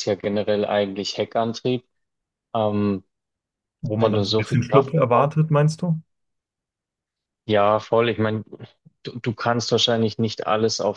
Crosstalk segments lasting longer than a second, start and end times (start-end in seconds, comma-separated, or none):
3.9-5.3